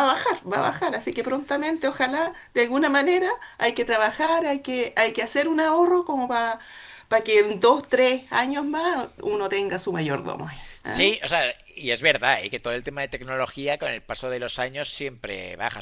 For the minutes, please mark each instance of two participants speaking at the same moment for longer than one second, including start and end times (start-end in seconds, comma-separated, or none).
none